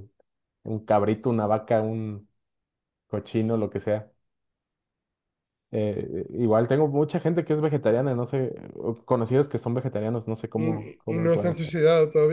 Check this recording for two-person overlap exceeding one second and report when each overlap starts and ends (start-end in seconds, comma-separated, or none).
10.5-11.7